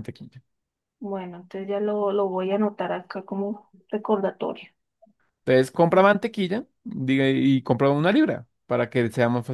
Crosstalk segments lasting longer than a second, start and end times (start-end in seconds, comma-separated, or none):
none